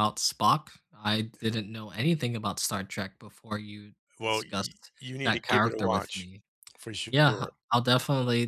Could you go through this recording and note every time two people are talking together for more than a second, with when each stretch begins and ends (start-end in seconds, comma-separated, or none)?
4.2-6.3